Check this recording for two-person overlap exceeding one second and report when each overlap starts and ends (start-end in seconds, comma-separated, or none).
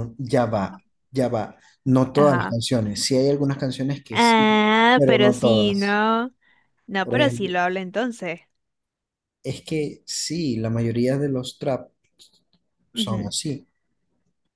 4.1-6.0